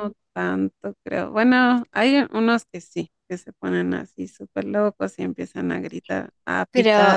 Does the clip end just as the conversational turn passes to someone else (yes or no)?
yes